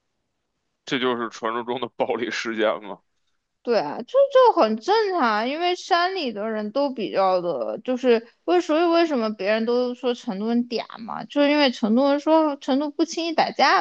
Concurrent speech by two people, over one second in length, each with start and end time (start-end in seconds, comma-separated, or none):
none